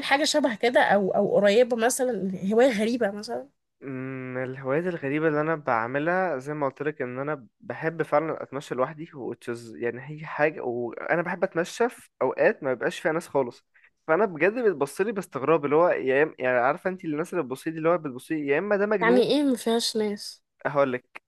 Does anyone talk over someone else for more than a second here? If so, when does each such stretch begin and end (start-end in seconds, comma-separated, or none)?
none